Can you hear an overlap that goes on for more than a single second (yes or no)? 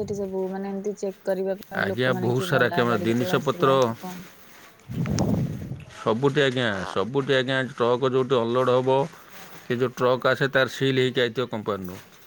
yes